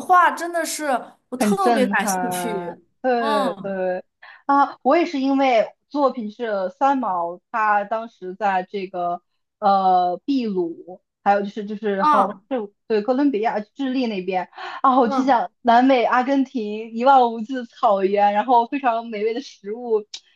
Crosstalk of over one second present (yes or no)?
yes